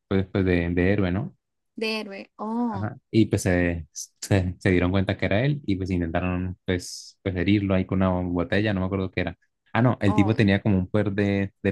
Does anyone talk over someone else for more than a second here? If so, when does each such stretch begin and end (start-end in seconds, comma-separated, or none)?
none